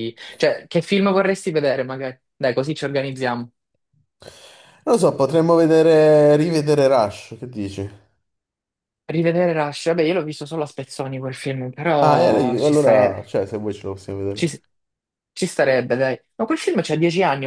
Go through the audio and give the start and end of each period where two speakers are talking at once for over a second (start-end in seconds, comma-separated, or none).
12.0-13.2